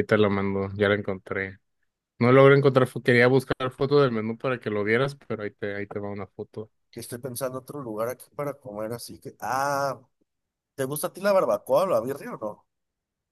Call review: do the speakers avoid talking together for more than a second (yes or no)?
yes